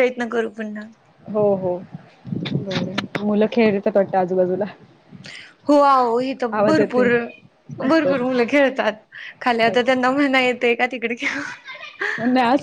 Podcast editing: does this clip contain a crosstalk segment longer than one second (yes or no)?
no